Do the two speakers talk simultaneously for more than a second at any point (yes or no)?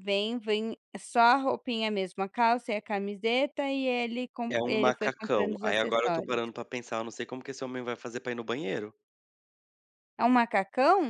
yes